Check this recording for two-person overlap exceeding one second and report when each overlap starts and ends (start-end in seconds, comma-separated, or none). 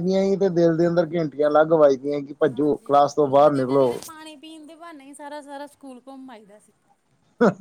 2.5-3.9